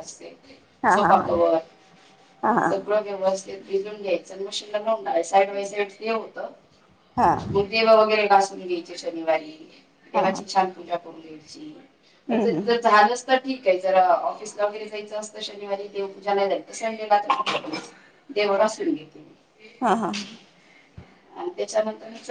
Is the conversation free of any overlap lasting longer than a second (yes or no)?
yes